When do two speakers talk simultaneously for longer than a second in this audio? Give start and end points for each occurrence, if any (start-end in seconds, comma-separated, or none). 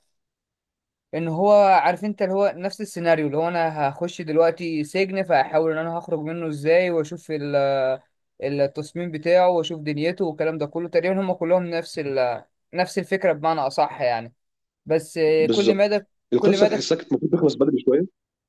15.4-16.9